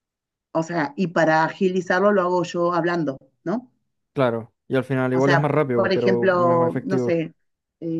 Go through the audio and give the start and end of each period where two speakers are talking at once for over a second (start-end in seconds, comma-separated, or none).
5.1-7.2